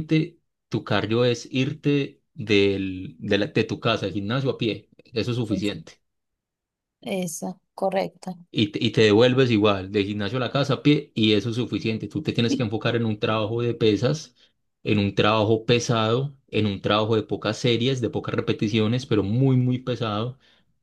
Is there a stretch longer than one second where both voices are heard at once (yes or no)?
no